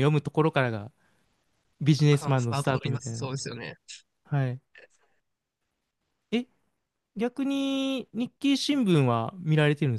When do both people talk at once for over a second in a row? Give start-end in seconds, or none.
2.1-3.3